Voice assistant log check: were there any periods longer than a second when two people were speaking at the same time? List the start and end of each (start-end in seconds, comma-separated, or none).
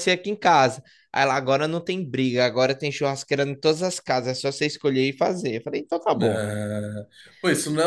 none